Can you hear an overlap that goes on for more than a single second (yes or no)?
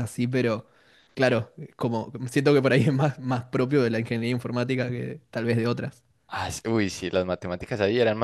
no